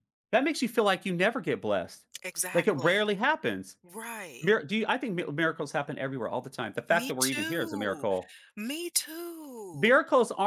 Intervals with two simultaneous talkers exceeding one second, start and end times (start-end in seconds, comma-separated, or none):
6.9-8.1